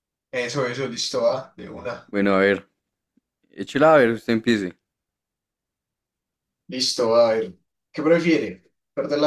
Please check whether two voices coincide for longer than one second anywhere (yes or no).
no